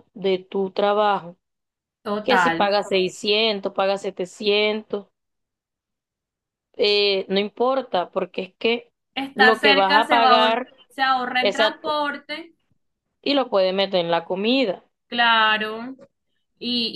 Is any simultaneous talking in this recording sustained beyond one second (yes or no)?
yes